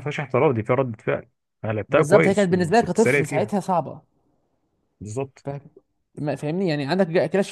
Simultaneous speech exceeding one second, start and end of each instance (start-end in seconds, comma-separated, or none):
1.9-3.5